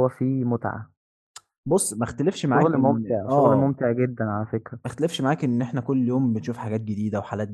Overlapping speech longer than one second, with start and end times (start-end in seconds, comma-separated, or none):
2.5-3.8